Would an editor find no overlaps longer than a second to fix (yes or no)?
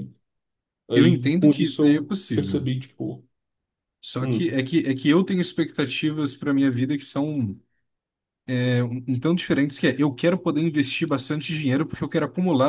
no